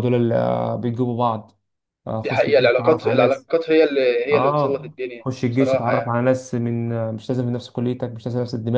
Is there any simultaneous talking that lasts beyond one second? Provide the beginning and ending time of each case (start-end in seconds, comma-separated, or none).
2.2-3.5, 4.3-6.2